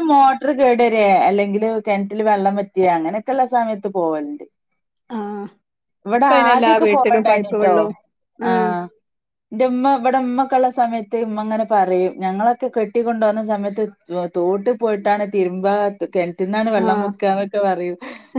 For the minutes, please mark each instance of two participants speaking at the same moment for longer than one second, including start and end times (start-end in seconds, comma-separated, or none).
6.2-7.7